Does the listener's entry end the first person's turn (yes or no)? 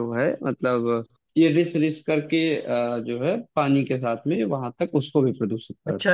yes